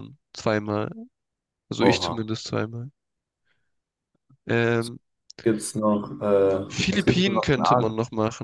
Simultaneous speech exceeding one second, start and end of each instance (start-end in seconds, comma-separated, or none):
6.7-7.9